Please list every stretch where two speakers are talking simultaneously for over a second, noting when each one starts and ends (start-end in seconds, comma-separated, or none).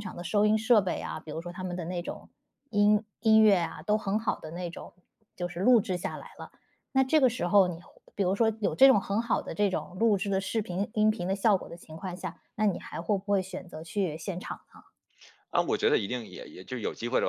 none